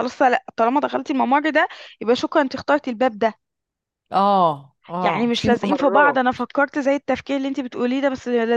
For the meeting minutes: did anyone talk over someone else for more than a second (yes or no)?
yes